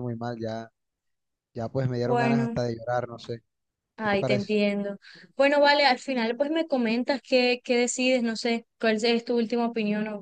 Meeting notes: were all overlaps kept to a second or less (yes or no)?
yes